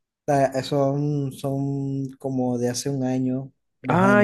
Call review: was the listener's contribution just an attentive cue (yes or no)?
no